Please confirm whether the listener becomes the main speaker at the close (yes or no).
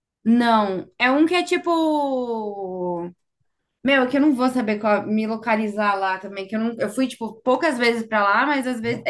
no